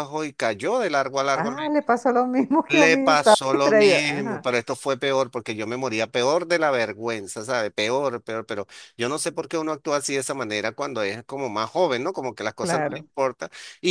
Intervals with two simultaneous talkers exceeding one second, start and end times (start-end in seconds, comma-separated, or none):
2.7-4.5